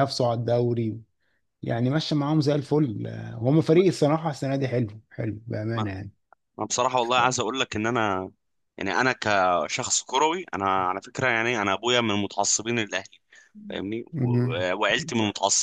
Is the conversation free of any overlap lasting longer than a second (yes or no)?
yes